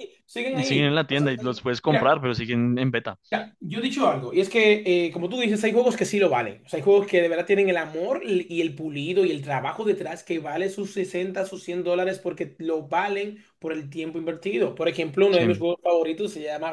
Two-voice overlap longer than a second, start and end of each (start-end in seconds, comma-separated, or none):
0.6-2.1